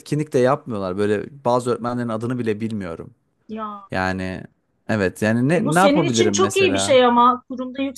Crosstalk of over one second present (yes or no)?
yes